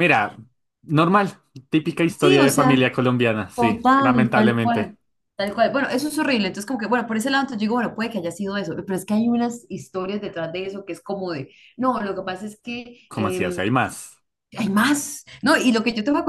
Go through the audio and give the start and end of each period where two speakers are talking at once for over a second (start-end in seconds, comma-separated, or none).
3.5-4.9